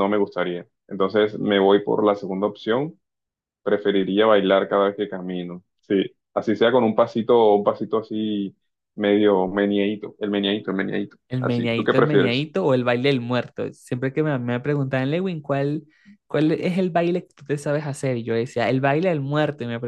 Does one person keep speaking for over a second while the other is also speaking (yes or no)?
yes